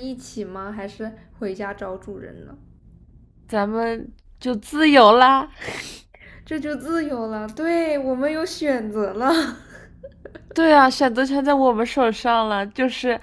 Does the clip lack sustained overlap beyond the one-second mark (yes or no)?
yes